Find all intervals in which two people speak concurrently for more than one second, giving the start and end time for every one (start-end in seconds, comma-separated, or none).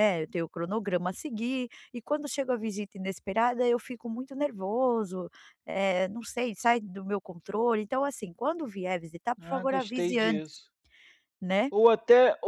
9.4-10.6